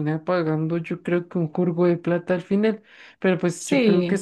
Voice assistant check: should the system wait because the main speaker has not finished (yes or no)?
yes